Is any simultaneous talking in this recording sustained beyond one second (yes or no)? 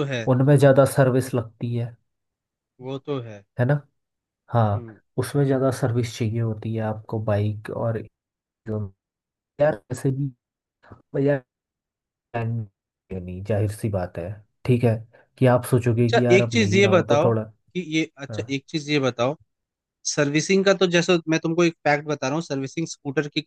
yes